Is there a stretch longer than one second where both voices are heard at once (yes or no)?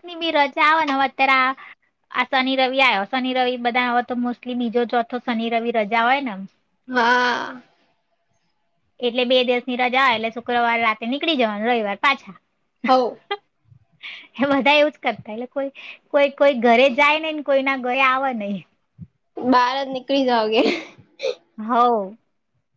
no